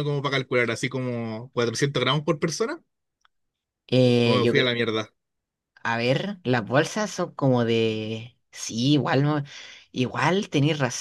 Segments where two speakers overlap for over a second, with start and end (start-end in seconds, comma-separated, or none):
none